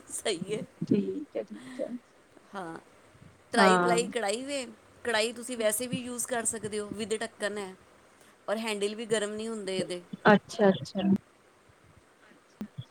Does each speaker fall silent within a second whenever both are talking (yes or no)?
yes